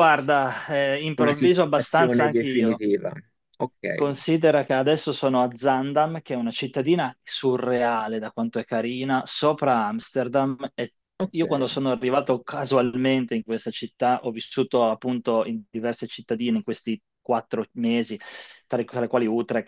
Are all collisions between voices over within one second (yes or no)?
no